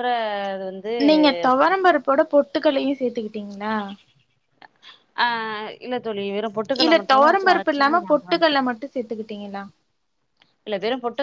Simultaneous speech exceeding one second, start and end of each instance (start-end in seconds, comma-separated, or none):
6.8-8.6